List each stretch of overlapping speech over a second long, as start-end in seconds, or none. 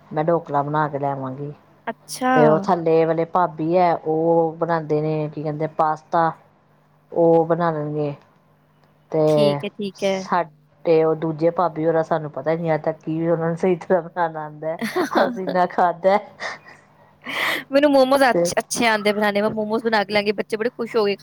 none